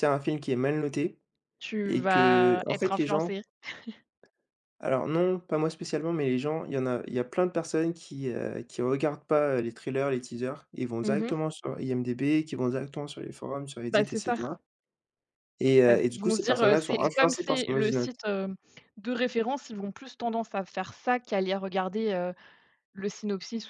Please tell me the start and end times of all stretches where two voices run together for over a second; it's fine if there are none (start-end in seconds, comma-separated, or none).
1.9-3.4, 15.9-18.1